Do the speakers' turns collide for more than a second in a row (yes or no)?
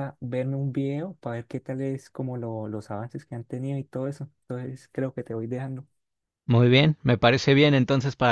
no